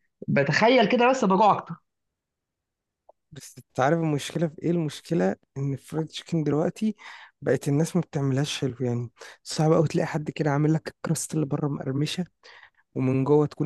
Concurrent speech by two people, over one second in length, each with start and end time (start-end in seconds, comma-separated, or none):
none